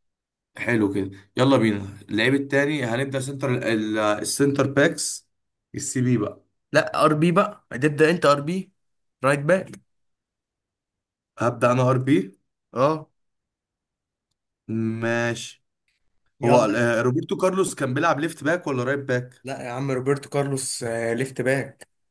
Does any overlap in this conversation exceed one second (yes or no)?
no